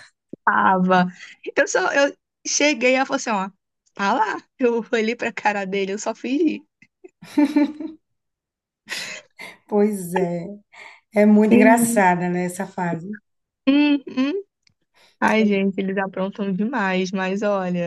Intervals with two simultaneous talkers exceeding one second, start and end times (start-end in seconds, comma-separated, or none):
none